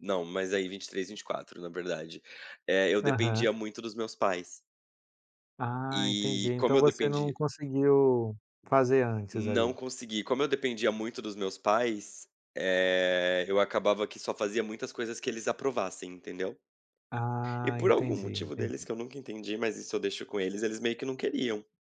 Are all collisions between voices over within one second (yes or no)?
no